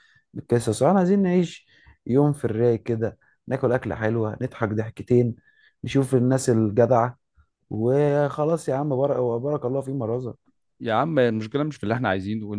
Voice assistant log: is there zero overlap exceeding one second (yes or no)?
yes